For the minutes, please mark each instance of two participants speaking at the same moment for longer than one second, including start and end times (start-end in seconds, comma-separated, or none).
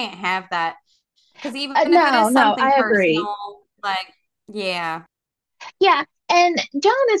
1.7-3.3